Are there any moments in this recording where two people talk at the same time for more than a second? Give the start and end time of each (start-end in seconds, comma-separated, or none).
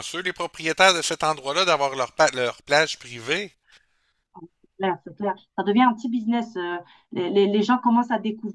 none